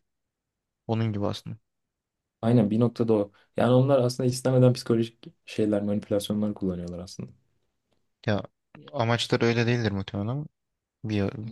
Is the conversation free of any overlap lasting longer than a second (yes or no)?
yes